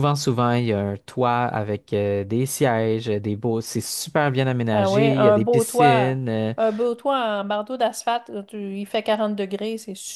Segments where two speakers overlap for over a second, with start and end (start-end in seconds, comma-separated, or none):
4.7-6.2